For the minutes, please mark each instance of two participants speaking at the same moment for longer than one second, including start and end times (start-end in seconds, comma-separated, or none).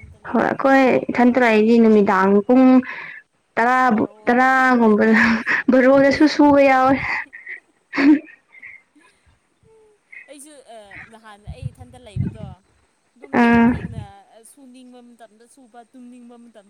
none